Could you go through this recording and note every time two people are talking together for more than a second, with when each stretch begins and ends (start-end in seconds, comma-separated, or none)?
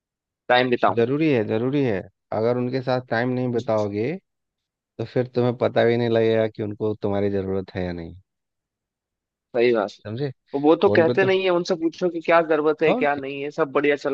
none